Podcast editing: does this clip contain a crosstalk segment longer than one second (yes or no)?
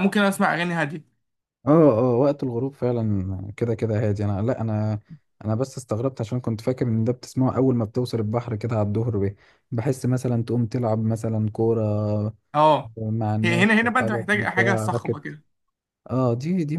yes